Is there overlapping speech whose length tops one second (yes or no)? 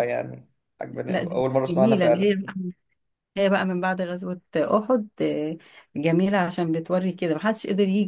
yes